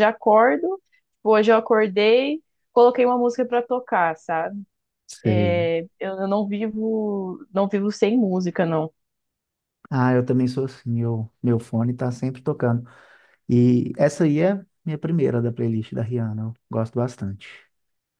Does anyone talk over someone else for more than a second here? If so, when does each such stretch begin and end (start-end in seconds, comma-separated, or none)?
none